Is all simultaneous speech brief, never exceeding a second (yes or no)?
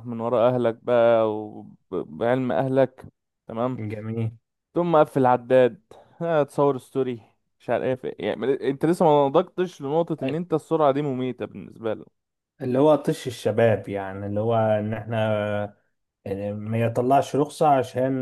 yes